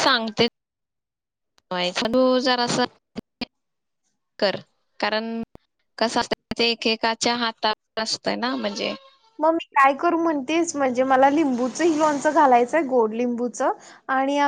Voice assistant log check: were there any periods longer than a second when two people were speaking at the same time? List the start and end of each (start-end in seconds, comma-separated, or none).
none